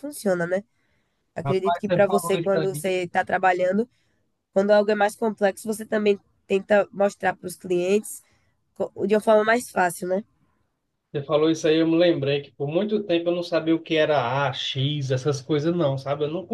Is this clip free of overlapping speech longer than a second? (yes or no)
no